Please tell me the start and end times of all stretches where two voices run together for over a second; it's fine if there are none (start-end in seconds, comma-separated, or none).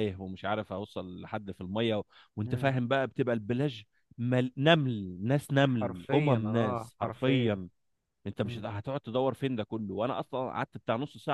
5.8-7.6